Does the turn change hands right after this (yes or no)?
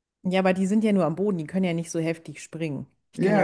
yes